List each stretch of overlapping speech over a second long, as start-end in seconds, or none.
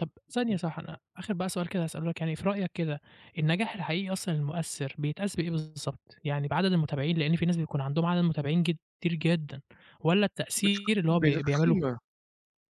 10.6-11.9